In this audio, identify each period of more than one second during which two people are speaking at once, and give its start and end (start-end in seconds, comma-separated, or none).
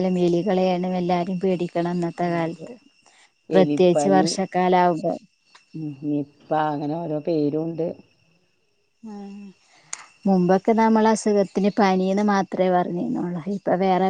none